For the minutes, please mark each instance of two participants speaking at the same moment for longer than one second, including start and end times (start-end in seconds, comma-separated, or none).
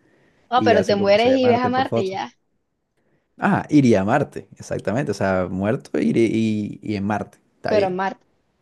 0.6-2.2